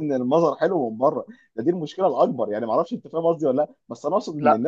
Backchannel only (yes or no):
yes